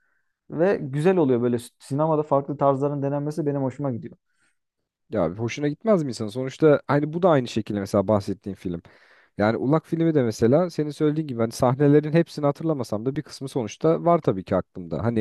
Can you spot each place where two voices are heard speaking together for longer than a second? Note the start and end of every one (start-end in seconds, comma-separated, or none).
none